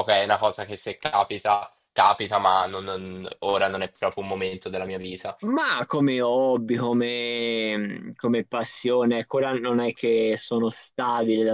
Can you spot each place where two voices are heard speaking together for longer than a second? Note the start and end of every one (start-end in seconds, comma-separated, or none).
none